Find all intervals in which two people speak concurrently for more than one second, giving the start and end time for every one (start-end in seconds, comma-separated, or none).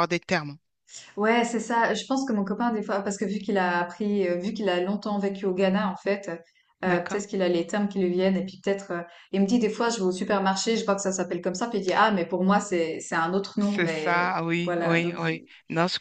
13.6-15.5